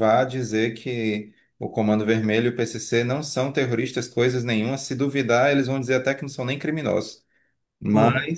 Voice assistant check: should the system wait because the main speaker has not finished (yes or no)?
yes